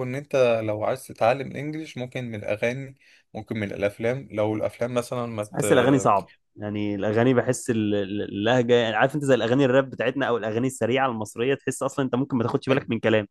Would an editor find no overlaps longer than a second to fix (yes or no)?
yes